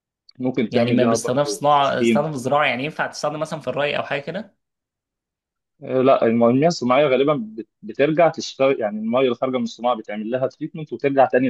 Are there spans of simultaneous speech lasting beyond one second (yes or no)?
yes